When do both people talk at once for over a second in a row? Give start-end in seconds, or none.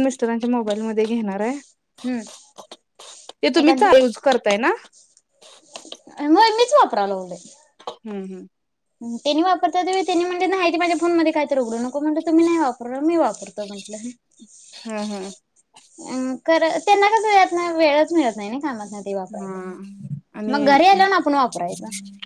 19.4-20.8